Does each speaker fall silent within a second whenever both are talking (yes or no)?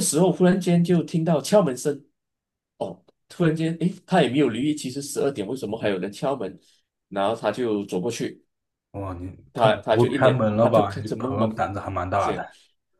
no